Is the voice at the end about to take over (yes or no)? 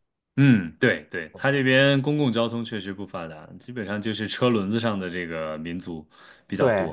yes